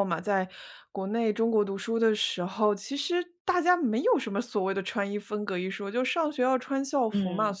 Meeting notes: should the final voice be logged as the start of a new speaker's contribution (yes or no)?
no